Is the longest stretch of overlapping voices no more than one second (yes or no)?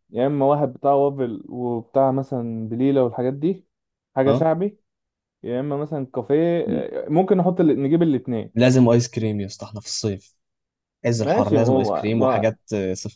no